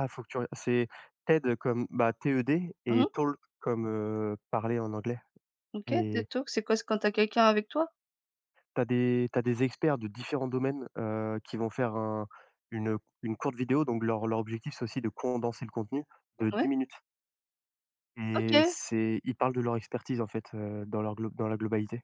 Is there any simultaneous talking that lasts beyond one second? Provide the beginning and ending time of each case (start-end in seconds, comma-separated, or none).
none